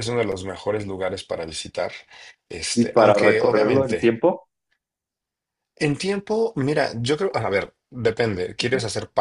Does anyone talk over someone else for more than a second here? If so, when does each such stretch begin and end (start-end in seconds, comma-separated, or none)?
2.7-4.2